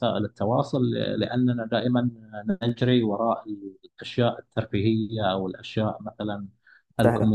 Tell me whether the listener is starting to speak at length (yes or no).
no